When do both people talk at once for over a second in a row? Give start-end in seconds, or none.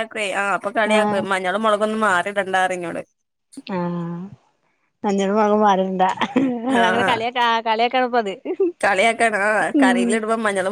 none